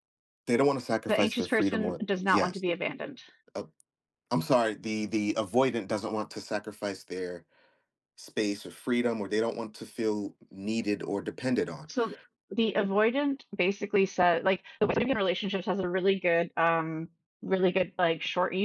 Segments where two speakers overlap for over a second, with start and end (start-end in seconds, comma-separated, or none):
1.1-2.6